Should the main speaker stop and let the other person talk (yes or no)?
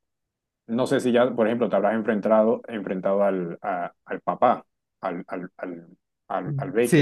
yes